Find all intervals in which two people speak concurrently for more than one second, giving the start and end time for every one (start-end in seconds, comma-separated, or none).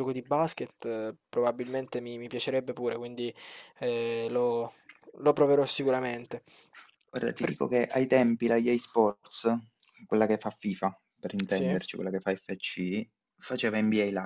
none